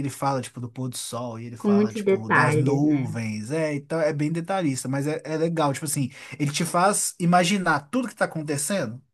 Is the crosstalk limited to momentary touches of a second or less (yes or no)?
no